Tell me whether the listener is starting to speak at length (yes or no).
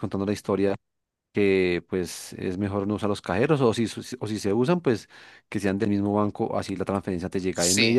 no